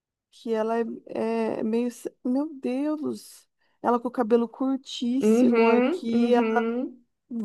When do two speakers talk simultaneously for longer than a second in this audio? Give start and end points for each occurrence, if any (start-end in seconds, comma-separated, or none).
5.2-6.7